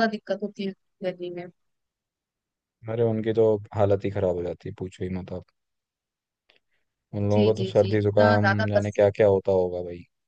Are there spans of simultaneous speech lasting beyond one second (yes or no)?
yes